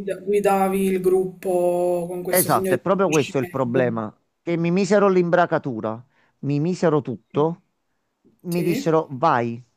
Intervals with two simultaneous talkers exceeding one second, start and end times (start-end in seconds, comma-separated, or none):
2.3-4.2